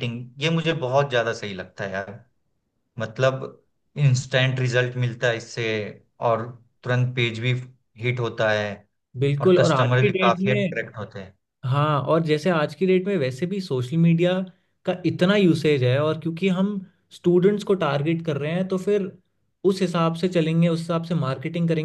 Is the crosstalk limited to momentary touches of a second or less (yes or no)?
no